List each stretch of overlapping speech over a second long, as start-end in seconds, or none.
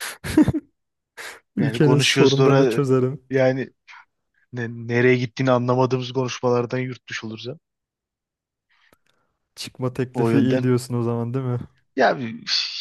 1.6-2.8